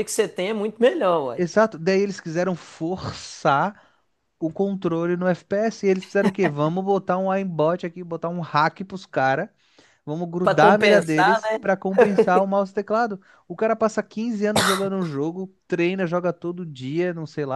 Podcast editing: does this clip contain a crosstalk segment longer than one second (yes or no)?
yes